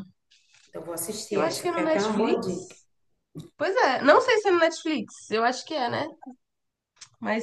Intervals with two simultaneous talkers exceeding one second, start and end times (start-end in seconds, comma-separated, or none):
1.3-2.7